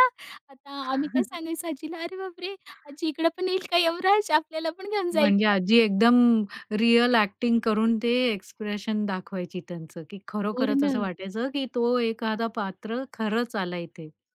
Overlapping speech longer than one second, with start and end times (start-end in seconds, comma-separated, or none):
none